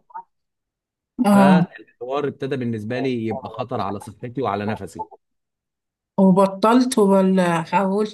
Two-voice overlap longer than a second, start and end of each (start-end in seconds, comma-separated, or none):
none